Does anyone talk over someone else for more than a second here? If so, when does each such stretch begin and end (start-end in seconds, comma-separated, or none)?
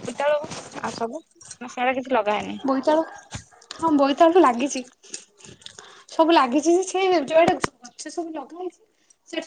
none